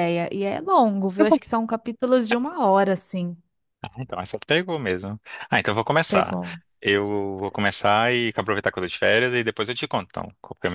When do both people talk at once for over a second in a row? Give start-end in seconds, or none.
none